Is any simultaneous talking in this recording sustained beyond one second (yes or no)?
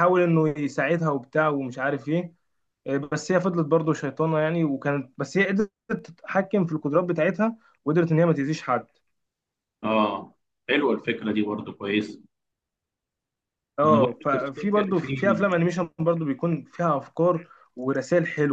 yes